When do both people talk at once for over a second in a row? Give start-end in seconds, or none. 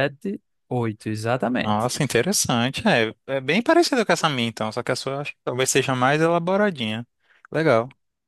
none